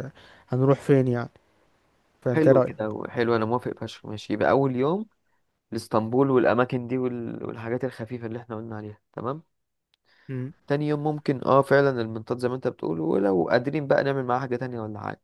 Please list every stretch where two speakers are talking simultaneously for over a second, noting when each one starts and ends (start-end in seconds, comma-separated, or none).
none